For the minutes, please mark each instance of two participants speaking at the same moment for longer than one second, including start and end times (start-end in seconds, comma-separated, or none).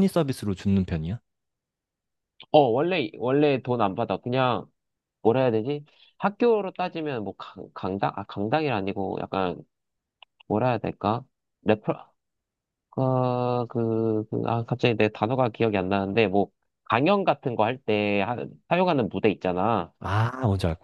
none